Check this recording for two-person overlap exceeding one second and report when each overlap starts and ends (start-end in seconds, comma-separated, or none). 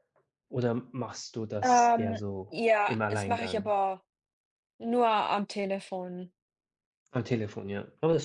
1.6-3.7